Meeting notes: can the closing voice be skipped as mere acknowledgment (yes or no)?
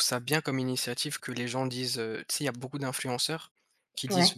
yes